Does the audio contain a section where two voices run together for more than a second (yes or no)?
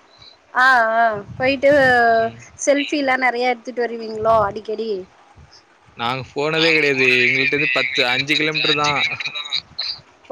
no